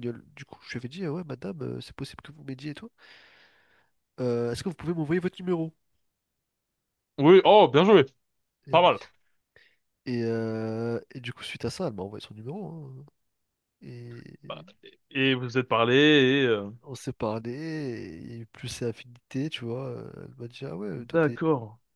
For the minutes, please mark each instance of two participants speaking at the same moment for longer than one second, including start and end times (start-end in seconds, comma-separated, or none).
none